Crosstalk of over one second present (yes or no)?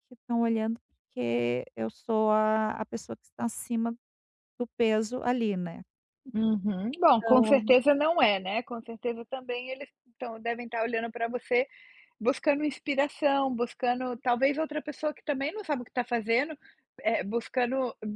no